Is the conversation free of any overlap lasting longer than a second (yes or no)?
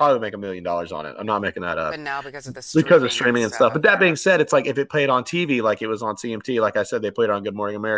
no